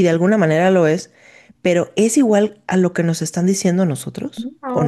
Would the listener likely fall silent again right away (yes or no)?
no